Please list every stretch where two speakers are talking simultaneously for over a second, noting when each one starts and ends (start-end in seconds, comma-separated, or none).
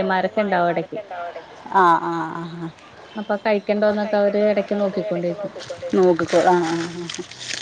3.8-5.3